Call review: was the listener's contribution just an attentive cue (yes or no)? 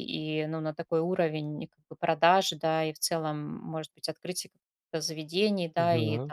yes